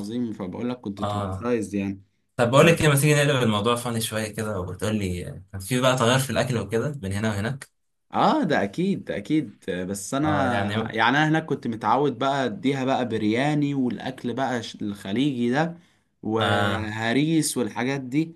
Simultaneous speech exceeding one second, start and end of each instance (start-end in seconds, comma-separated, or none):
none